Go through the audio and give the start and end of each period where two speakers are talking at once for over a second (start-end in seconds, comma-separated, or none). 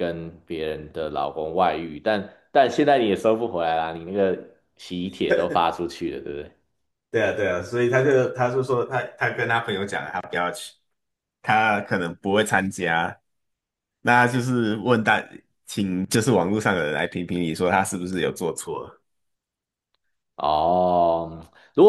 none